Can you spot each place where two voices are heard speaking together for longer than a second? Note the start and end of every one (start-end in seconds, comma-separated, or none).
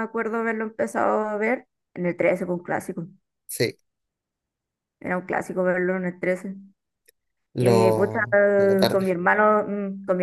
7.5-9.2